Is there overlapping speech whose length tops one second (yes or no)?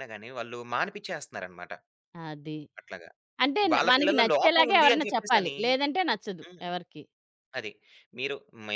yes